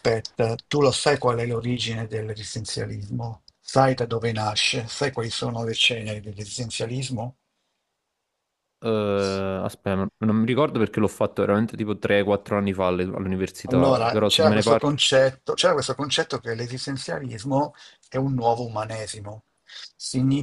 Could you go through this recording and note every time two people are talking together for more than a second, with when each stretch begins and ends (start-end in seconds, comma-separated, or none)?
13.7-15.0